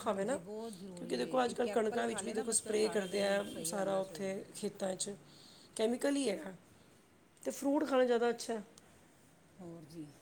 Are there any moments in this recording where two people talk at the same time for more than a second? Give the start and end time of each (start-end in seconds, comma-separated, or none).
0.9-4.3